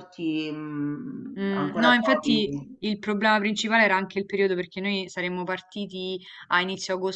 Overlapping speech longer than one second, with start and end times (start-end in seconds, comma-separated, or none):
1.4-2.8